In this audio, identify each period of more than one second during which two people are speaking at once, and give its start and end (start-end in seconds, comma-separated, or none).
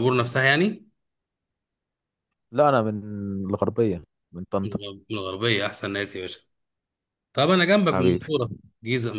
none